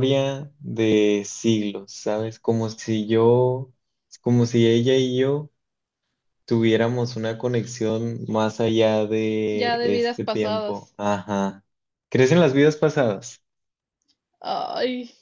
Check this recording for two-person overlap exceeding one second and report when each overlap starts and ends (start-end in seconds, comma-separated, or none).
9.5-10.9